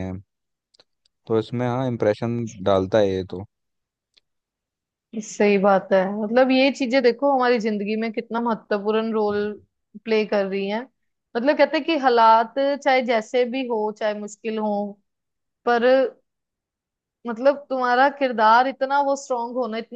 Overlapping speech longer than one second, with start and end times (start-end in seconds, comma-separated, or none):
none